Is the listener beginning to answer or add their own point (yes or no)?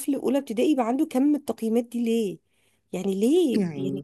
no